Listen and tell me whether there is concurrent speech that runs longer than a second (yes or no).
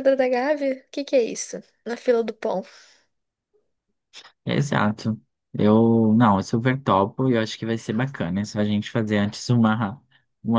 no